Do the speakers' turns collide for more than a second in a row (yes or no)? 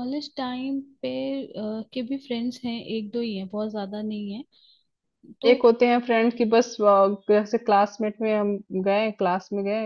no